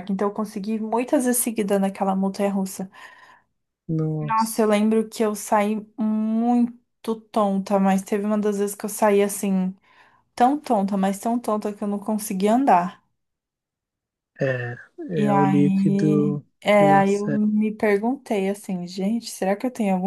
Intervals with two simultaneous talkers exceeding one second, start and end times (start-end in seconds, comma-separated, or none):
15.1-17.4